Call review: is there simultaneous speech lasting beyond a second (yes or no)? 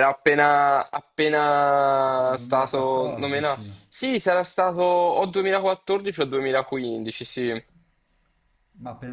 yes